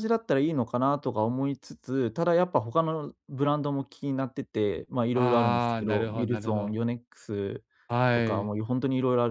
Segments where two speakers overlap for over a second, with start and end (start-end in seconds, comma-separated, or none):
5.1-6.8